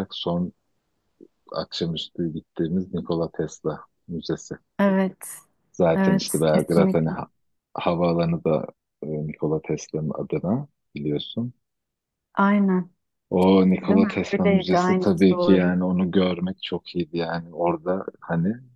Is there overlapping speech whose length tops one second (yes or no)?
yes